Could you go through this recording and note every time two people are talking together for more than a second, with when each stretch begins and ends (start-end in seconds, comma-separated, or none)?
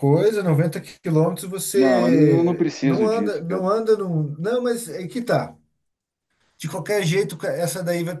1.8-3.6